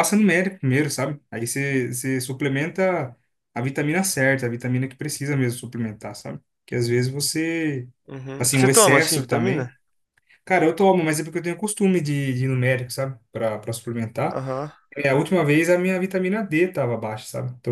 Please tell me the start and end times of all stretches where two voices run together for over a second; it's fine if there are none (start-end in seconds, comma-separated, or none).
8.4-9.7